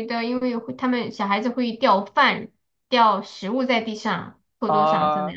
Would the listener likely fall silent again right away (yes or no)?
no